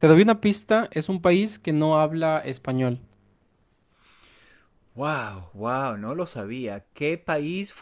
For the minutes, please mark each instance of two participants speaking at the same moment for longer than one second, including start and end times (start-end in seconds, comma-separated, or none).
none